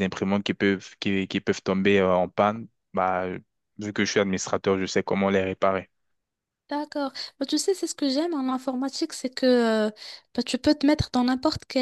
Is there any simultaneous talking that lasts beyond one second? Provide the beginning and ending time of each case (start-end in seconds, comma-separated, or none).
none